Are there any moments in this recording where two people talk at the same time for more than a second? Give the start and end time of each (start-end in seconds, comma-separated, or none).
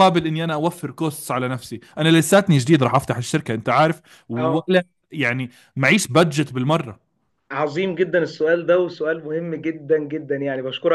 none